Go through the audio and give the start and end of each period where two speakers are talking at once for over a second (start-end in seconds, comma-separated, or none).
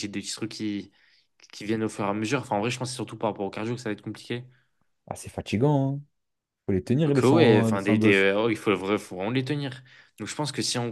7.0-8.3